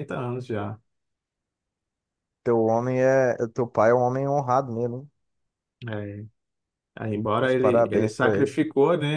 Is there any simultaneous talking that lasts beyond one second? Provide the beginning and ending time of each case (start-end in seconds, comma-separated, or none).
7.4-8.6